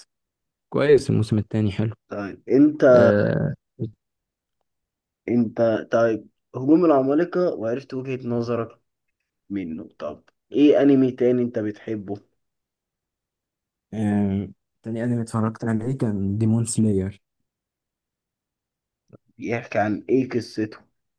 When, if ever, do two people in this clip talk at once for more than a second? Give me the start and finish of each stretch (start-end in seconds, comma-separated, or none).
none